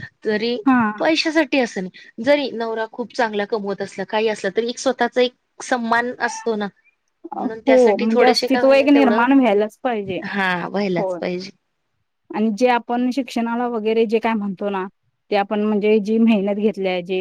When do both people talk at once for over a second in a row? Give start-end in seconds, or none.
7.4-9.2